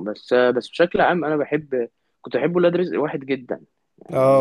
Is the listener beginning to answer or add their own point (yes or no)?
yes